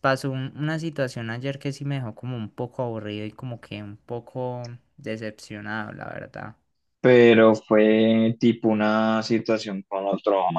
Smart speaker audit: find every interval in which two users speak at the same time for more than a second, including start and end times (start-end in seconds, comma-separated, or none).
none